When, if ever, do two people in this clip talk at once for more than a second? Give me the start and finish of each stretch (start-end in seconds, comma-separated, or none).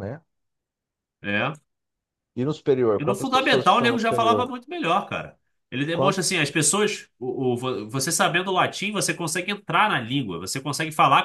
3.0-4.5